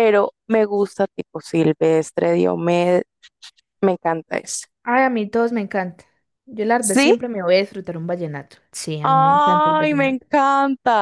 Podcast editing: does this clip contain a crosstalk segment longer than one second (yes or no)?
yes